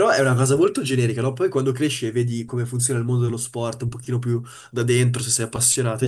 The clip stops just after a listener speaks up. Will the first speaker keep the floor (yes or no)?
yes